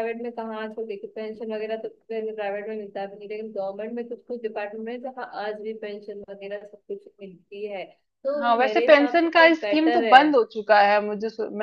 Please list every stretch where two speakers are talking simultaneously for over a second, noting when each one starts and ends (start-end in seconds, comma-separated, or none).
8.4-10.2